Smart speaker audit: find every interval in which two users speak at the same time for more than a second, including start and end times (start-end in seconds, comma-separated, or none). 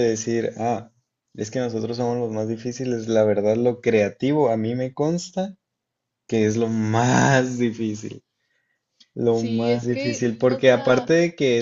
9.2-11.1